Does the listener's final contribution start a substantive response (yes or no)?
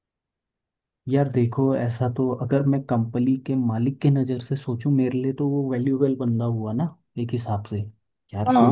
no